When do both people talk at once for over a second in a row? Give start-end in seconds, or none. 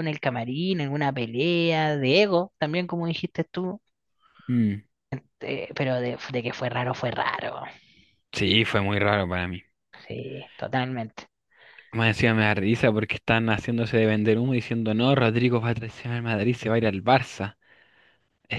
none